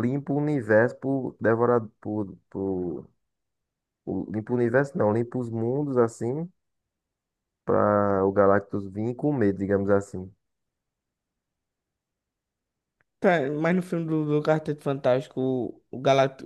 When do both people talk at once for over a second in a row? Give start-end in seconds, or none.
none